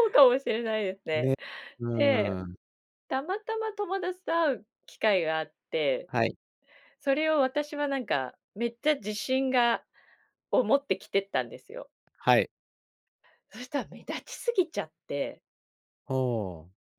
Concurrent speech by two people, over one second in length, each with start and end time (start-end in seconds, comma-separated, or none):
none